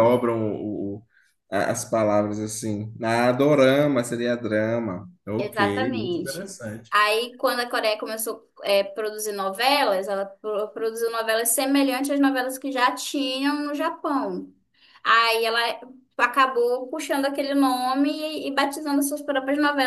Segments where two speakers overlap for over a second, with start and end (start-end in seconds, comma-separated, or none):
5.4-6.9